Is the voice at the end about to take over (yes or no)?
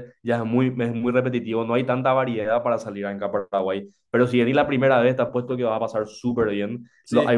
no